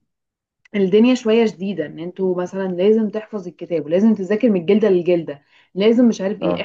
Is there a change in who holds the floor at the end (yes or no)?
no